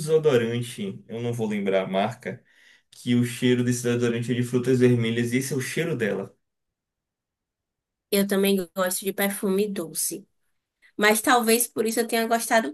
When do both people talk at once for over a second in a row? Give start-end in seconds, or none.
none